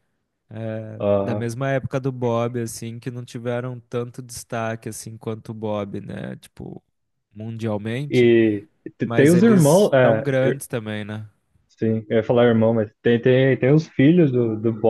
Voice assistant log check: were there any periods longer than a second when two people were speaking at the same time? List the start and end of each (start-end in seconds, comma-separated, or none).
9.1-10.6